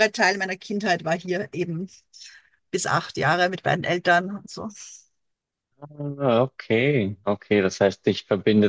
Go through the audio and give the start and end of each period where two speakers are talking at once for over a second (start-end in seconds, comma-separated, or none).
none